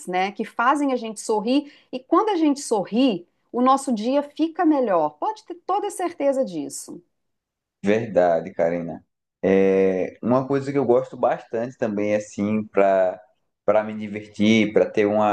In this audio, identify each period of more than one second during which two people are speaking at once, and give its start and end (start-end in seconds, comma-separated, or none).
none